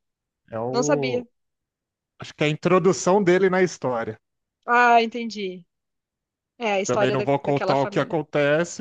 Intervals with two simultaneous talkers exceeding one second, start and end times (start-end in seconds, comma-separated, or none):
6.9-8.2